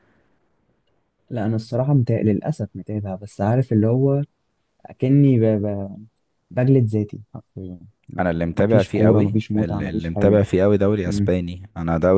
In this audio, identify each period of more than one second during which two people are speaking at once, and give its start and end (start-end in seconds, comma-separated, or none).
8.2-10.4